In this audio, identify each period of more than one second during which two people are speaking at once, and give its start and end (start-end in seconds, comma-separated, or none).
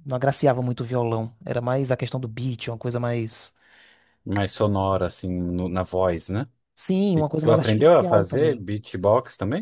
7.2-8.7